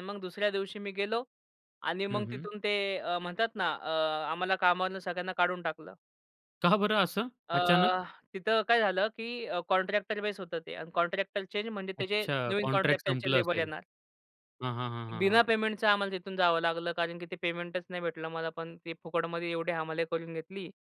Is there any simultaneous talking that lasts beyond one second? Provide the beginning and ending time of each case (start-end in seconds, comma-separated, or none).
12.0-13.7